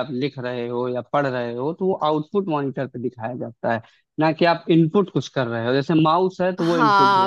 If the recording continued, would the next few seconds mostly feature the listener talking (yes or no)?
yes